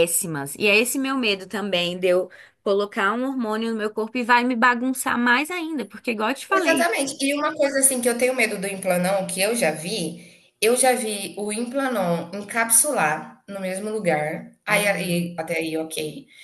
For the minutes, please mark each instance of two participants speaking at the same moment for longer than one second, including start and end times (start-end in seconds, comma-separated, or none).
none